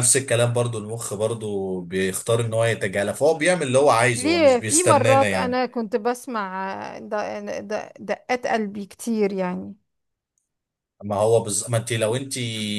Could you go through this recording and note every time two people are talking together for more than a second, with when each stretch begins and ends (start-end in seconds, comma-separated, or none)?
4.1-5.6